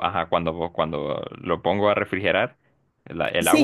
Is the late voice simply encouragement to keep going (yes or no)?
no